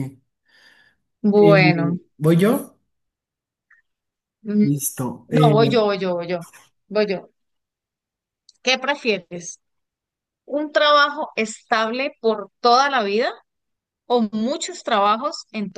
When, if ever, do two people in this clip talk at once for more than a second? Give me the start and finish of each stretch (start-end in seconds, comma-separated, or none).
none